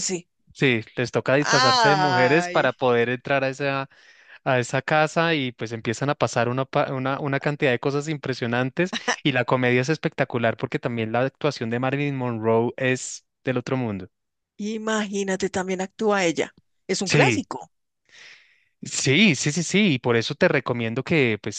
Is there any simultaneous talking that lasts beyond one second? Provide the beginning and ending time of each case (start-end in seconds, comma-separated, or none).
1.4-2.7